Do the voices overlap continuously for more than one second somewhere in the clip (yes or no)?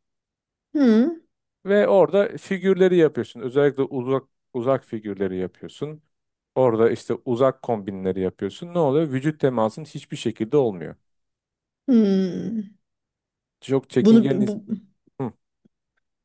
no